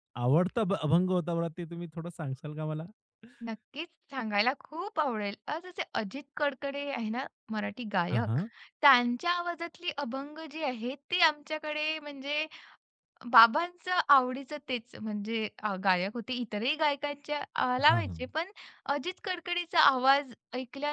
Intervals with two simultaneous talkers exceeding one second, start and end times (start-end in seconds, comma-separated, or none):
none